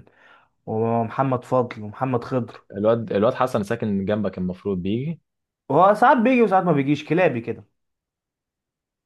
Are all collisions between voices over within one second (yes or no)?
yes